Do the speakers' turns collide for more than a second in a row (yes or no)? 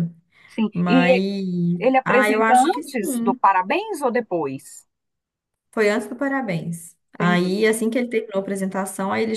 yes